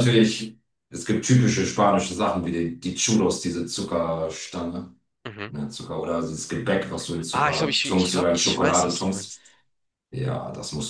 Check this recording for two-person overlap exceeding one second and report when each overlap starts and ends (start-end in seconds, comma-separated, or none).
7.3-9.3